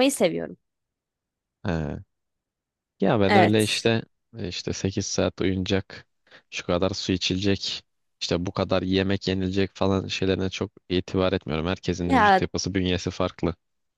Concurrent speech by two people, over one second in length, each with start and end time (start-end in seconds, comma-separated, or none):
none